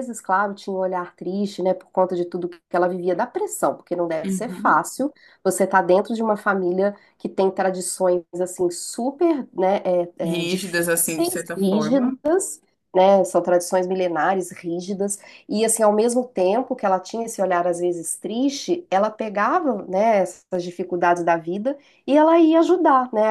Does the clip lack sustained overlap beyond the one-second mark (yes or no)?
no